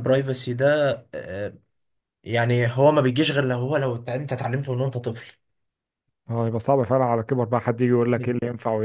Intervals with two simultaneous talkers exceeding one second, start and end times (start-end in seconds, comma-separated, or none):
none